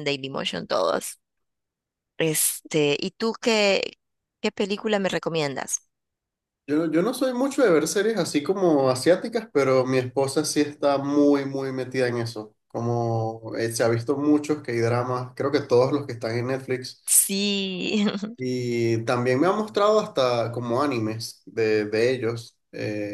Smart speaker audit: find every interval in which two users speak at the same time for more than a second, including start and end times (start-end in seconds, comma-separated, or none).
none